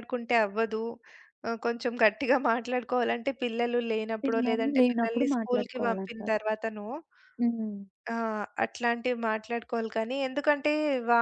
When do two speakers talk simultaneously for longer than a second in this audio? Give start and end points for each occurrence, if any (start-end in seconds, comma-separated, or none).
4.2-6.4